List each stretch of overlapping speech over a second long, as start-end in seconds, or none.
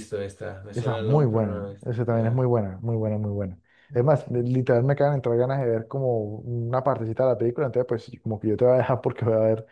0.7-2.4